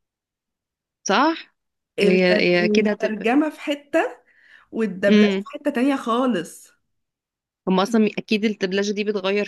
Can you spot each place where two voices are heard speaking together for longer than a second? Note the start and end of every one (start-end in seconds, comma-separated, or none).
2.0-3.3